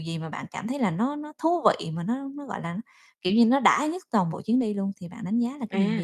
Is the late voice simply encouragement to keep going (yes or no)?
no